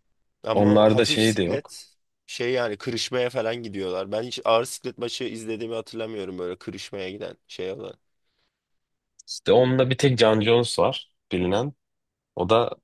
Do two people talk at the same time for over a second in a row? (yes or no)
yes